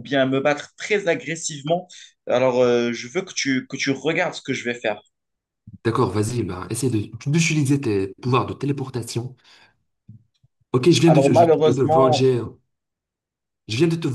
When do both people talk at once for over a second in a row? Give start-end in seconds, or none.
11.1-12.3